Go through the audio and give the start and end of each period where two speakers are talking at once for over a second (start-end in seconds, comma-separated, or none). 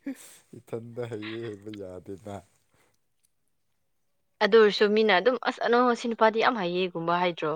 none